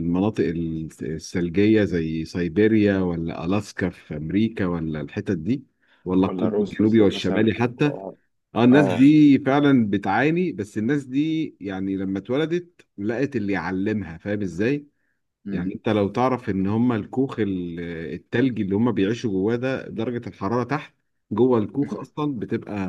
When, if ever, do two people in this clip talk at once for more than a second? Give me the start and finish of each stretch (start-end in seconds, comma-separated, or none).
6.2-7.9